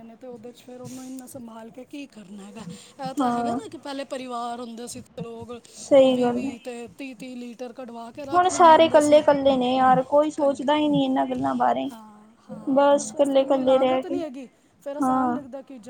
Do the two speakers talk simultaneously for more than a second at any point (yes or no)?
yes